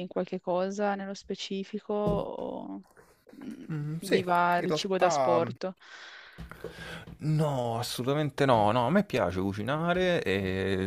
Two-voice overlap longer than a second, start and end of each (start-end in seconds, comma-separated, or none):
3.7-5.5